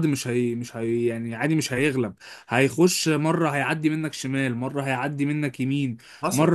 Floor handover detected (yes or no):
no